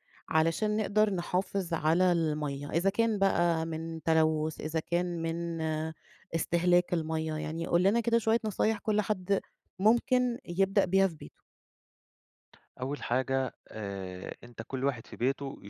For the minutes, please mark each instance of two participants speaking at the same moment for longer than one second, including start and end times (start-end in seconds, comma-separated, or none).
none